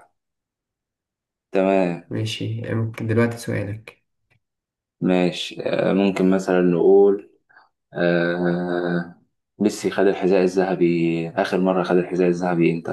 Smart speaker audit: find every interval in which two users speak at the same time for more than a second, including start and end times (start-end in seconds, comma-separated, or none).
none